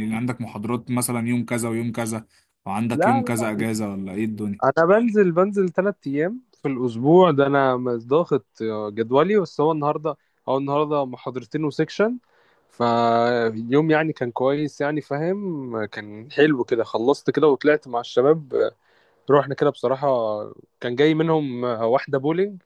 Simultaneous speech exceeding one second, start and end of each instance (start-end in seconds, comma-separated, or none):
none